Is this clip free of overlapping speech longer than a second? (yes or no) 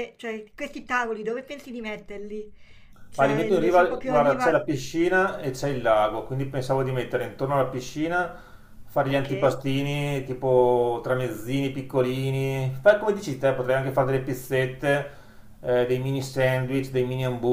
no